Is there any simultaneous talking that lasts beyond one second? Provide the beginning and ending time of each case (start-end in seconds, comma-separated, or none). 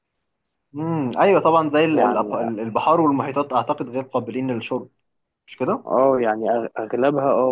none